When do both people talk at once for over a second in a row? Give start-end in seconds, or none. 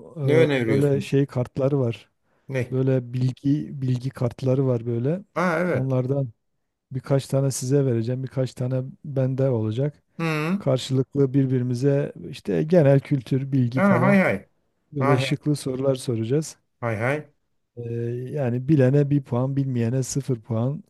none